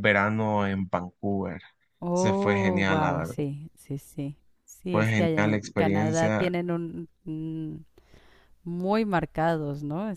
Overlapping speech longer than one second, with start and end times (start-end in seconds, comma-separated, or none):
2.1-3.4, 4.9-6.5